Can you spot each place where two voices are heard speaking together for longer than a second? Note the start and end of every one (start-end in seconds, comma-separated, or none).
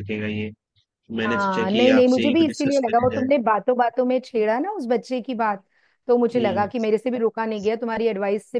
1.3-3.3